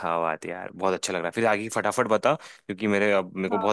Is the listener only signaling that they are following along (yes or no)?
yes